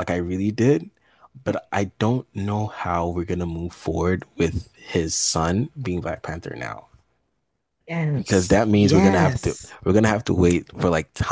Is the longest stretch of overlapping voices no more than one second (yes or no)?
no